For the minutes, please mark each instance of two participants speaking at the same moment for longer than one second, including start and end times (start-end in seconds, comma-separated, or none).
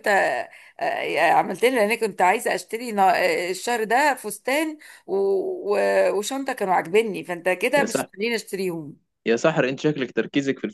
none